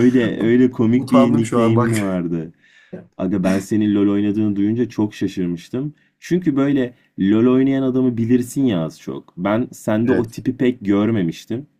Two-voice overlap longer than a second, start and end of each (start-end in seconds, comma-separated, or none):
0.9-2.2